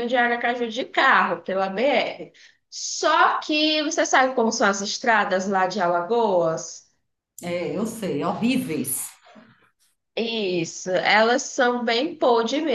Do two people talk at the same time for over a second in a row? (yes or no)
no